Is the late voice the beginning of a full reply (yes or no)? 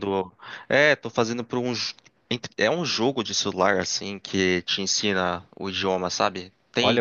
yes